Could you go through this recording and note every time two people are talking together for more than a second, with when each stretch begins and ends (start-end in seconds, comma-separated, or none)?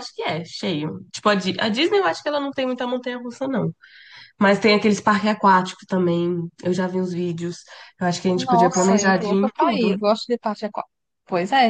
8.3-9.9